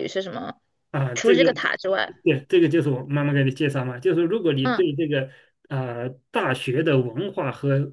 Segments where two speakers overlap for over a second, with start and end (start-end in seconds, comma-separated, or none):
none